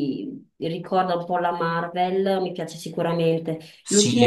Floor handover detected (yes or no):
yes